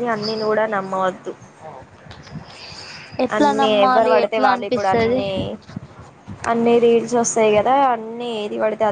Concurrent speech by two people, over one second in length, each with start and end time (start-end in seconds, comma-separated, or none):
3.4-5.2